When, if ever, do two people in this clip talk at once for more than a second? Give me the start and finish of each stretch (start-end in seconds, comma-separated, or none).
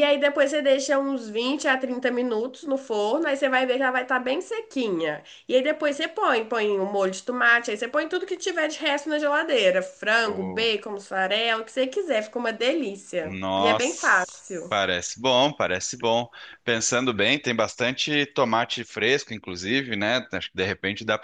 13.2-14.7